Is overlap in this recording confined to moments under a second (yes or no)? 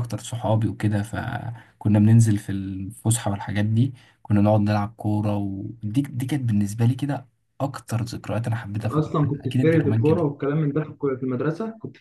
no